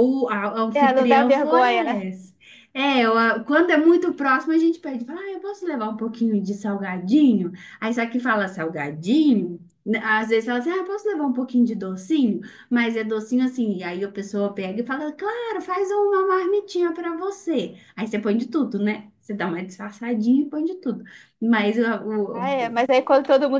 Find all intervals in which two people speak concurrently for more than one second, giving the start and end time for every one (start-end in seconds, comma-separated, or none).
0.7-2.0